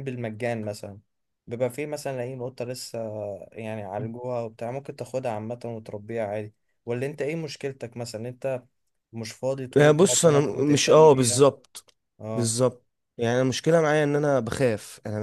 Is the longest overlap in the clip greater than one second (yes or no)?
yes